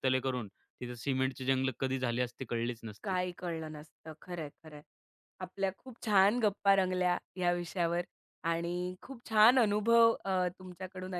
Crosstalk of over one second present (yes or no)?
no